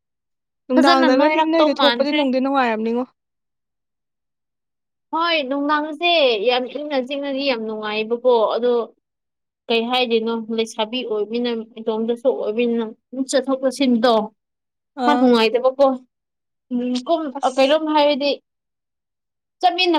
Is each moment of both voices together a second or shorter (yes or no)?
no